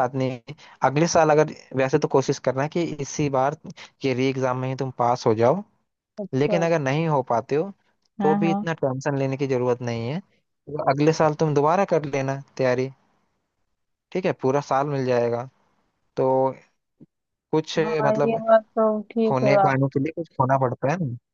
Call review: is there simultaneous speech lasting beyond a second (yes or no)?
no